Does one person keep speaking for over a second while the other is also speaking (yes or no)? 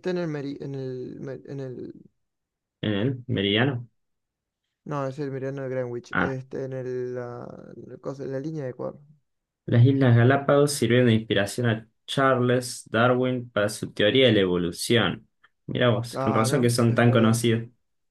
yes